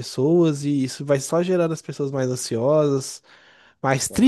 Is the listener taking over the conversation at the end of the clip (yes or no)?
no